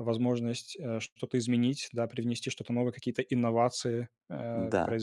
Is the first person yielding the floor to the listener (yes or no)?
no